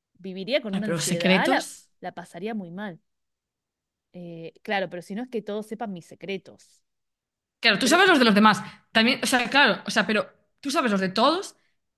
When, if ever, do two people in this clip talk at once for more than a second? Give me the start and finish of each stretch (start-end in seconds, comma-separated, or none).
0.7-1.9